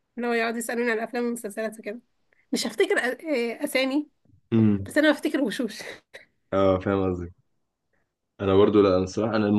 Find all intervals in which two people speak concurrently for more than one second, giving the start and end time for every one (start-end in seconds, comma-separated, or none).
none